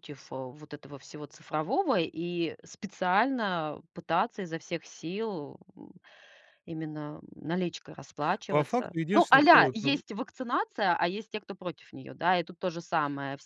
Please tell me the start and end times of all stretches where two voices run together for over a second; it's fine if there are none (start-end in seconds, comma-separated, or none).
8.5-10.0